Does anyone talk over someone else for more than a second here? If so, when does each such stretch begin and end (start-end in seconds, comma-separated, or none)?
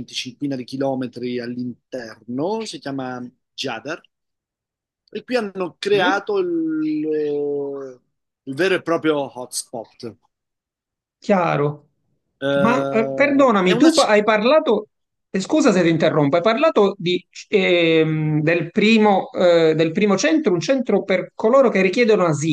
12.5-13.9